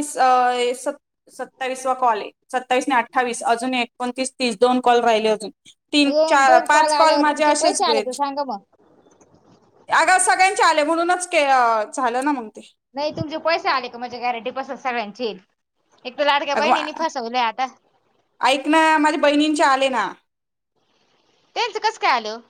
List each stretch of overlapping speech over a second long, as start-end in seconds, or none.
6.1-8.0